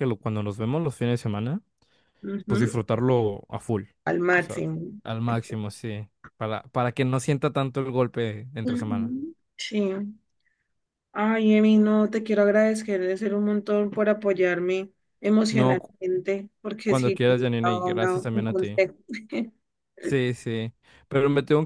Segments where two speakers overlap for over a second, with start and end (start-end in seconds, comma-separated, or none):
16.8-18.8